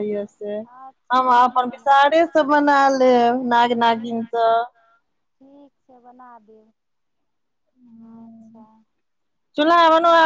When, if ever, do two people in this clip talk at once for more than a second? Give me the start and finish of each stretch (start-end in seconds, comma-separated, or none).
1.1-2.6